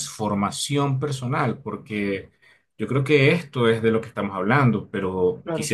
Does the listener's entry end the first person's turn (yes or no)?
yes